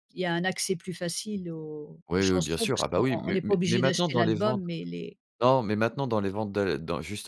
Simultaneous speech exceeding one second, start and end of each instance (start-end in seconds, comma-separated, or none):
2.1-4.6